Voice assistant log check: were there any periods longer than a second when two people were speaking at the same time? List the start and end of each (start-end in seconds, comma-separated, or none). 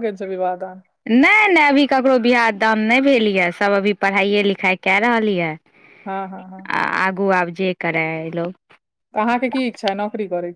none